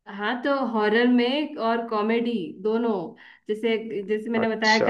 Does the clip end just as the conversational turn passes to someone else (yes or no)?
no